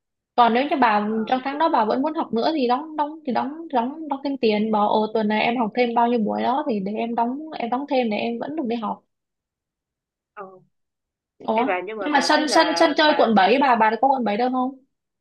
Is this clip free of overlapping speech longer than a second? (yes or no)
no